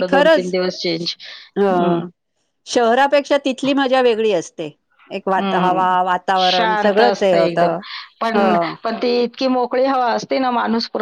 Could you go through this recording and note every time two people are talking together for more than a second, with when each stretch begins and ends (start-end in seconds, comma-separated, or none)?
6.5-7.7